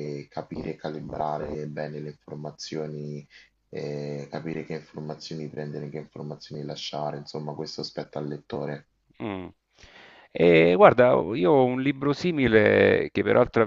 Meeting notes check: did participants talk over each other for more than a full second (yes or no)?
no